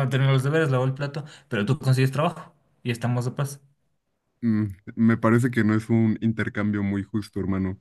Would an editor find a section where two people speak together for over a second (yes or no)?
no